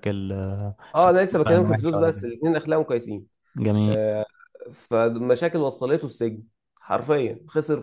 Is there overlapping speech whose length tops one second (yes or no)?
yes